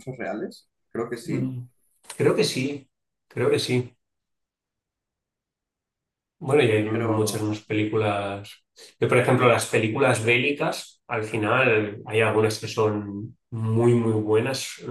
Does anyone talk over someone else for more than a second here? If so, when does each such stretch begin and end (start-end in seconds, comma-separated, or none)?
none